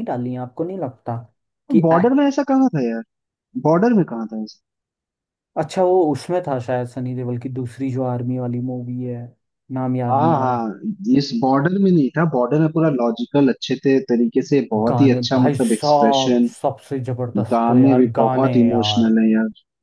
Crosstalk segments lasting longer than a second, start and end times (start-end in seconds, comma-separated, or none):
14.9-16.5, 17.5-19.1